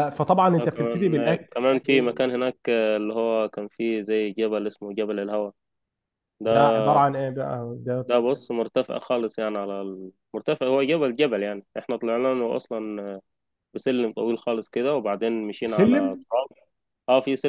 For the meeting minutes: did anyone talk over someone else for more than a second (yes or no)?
yes